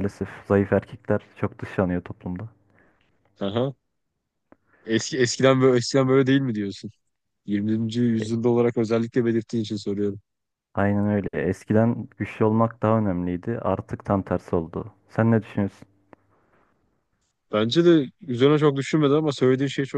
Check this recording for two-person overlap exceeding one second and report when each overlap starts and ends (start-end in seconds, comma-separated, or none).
none